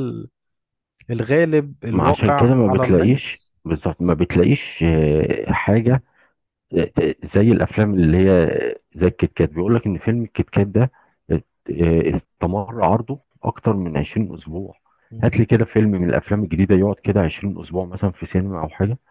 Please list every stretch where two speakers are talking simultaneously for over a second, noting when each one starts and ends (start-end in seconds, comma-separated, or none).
1.9-3.5